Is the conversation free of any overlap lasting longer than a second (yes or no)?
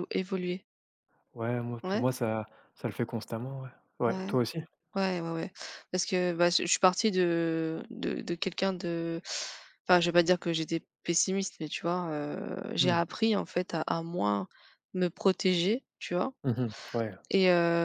yes